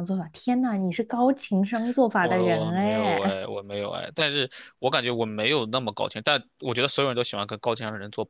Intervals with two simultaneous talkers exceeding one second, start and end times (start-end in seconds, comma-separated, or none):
2.2-3.4